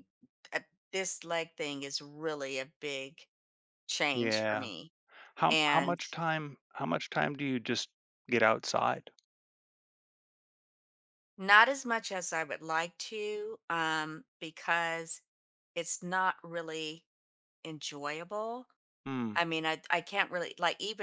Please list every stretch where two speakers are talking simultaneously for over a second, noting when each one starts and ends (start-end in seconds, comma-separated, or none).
none